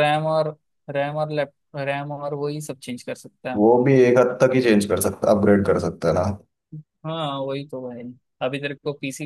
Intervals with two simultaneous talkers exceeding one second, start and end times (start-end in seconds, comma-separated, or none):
none